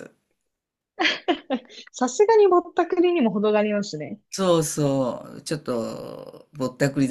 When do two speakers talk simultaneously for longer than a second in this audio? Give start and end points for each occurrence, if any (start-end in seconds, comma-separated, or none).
none